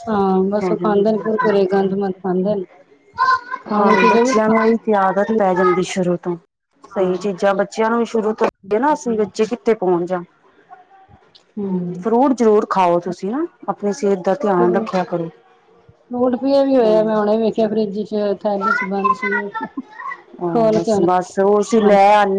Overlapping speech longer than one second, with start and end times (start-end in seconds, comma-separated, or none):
3.8-5.4